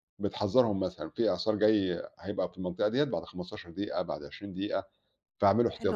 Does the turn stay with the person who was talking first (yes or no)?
no